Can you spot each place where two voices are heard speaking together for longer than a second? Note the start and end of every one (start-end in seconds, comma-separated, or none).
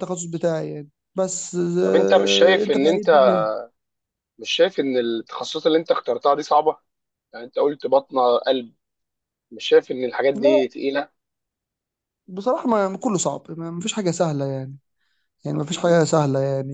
1.8-3.1